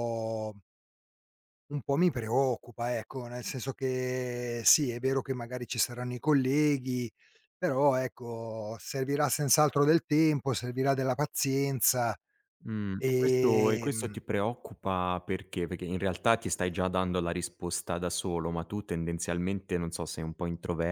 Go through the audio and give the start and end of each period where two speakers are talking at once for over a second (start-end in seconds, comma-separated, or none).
12.9-14.2